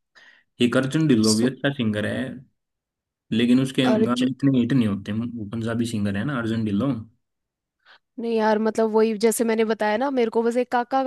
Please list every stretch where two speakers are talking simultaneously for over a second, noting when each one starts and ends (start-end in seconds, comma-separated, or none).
none